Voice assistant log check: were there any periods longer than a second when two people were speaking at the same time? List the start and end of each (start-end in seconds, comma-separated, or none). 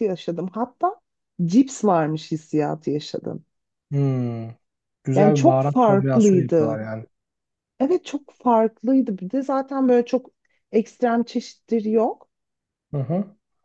5.2-6.8